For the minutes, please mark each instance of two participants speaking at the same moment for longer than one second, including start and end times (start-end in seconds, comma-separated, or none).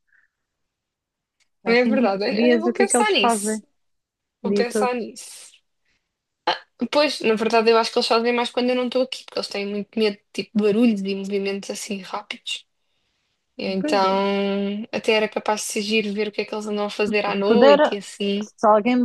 1.6-3.6